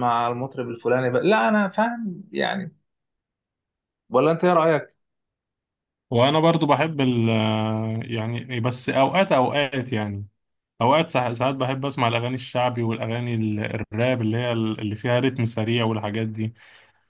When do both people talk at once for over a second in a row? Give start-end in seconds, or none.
none